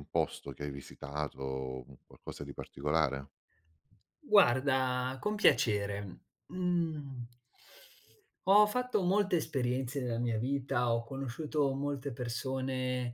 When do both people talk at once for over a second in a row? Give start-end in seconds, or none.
none